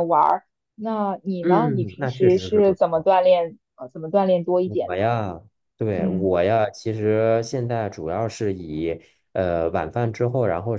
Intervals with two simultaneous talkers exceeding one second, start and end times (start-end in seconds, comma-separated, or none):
1.4-3.1